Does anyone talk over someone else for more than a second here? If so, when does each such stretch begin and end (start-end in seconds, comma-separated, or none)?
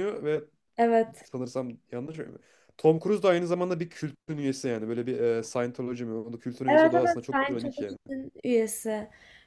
6.7-8.0